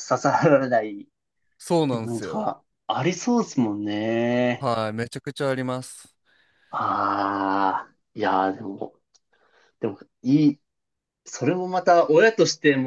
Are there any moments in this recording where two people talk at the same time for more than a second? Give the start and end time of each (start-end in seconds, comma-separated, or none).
none